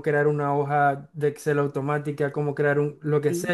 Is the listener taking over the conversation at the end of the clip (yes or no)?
no